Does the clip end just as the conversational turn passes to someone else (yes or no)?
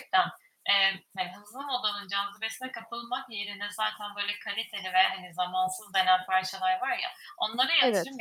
no